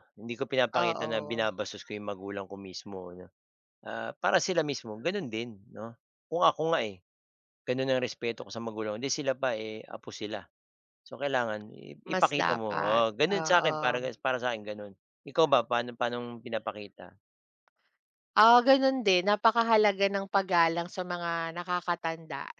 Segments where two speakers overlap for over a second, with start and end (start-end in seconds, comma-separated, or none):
12.1-14.1